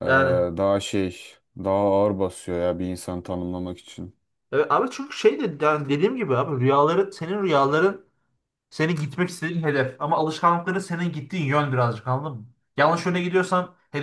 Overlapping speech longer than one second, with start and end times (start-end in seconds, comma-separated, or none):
none